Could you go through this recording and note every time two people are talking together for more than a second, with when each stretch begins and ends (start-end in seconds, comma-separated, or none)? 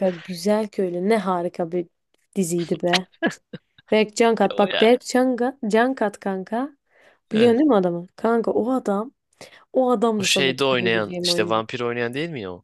10.2-11.6